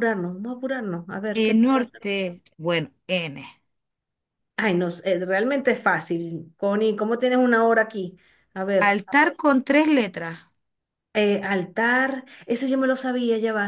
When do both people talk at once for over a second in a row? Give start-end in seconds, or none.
none